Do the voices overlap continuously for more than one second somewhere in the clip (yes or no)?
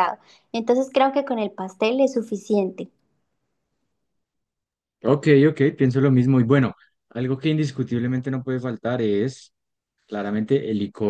no